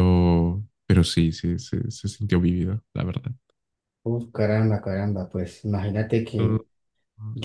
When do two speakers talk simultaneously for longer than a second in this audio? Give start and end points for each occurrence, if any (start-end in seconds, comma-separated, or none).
none